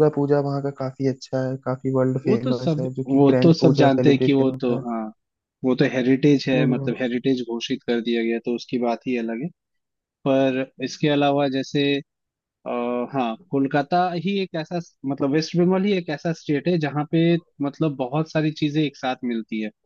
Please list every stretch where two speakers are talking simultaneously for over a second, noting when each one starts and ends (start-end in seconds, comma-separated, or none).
2.2-4.8